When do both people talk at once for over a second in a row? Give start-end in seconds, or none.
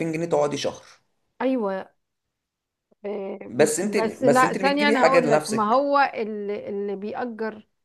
3.5-5.8